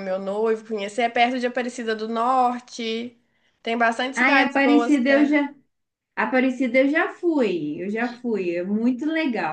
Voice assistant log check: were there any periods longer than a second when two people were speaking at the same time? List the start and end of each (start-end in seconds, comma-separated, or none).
4.2-5.4